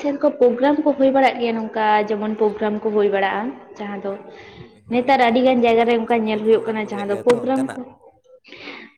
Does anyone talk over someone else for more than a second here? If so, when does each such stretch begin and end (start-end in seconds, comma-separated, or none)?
4.9-7.8